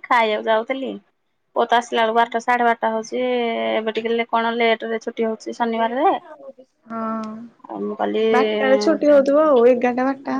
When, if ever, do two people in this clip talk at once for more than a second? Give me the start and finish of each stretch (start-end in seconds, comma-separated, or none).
none